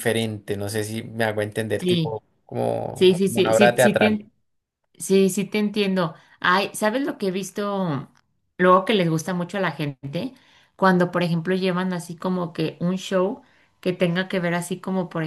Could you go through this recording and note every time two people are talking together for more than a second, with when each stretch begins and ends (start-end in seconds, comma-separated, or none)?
2.9-4.2